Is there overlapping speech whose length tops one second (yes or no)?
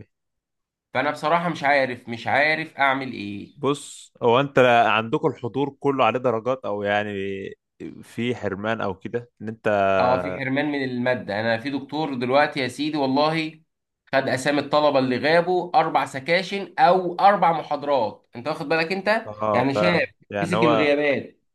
no